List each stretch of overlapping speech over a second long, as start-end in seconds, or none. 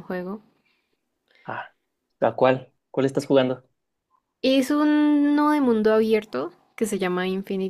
none